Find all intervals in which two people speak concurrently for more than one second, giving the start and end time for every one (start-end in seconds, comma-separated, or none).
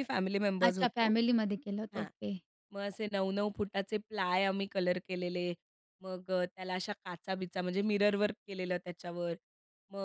none